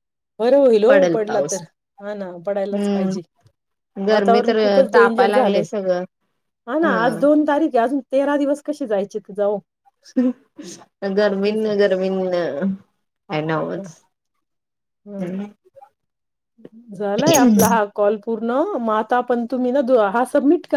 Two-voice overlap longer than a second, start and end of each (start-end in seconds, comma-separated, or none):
4.1-5.7